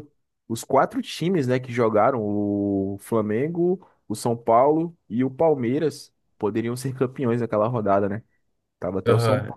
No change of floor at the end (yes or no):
no